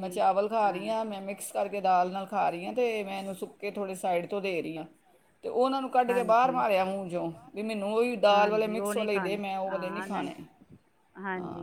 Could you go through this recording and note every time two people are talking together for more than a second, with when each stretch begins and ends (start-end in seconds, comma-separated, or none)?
8.3-10.3